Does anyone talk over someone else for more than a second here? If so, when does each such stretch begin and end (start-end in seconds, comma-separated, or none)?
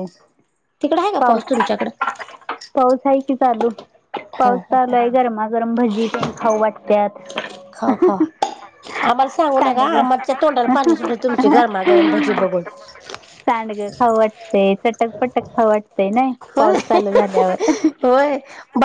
none